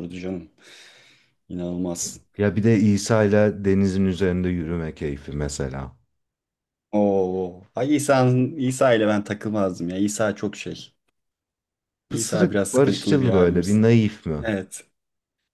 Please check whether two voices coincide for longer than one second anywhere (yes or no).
yes